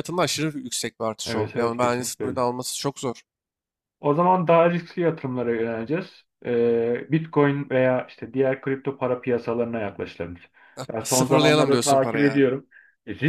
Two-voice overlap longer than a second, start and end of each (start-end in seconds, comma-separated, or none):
1.2-2.4, 11.0-12.5